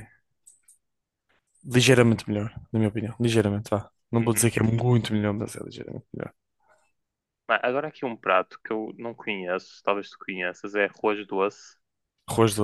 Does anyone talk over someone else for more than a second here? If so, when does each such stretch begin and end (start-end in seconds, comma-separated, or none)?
none